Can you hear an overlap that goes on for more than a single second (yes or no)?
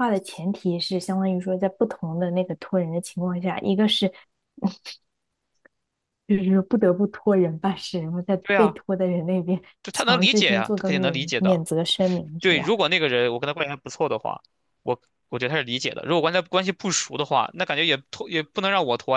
yes